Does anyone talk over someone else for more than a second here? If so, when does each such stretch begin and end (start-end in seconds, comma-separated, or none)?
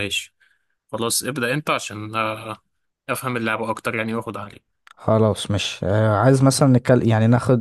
none